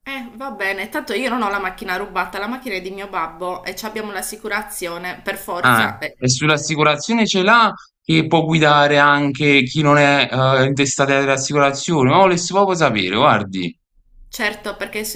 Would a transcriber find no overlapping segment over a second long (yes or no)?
yes